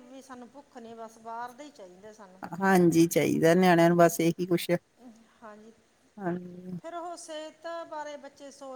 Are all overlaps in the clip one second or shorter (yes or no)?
yes